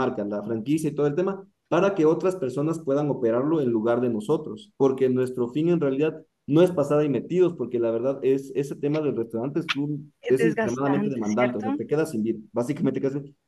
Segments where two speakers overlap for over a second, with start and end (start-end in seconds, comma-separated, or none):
10.2-11.8